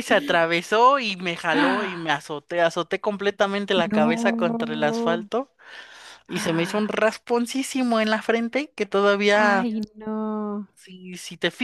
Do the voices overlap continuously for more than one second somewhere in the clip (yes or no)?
yes